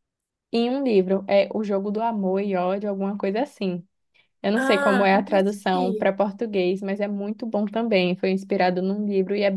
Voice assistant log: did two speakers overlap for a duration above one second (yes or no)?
yes